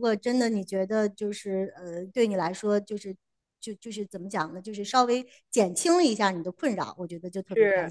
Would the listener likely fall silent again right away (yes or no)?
no